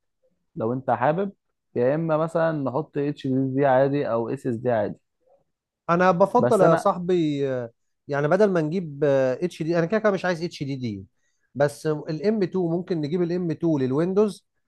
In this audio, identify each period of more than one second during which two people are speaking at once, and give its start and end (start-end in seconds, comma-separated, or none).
none